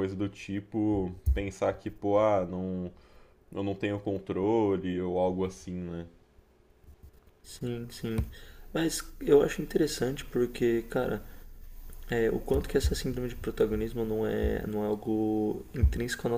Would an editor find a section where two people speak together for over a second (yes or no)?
no